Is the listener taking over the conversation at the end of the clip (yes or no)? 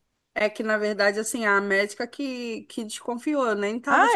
no